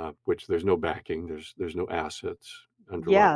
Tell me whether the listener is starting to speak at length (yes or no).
yes